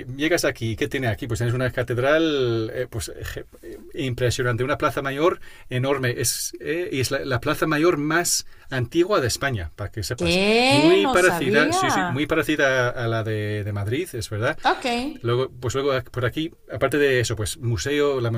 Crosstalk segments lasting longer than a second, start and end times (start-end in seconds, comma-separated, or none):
10.2-12.3